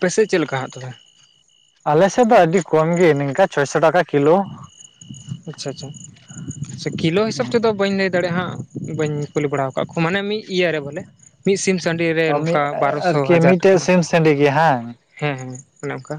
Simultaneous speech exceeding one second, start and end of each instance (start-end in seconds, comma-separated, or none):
12.3-13.8